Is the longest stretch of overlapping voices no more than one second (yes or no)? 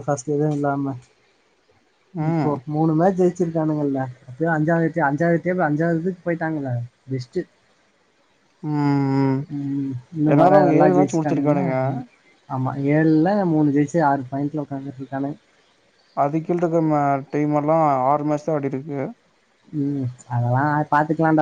no